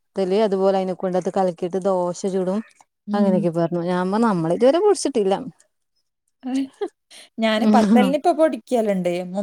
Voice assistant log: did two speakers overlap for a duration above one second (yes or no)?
no